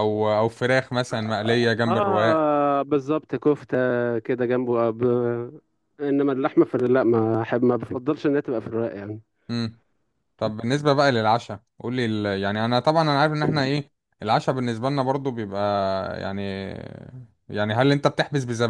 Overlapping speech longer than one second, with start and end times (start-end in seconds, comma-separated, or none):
none